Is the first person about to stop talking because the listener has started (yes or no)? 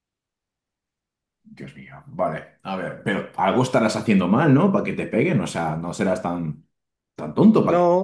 yes